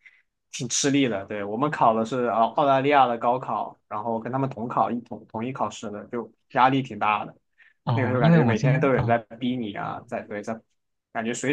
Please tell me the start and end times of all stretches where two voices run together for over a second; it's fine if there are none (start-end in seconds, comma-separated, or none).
7.9-9.2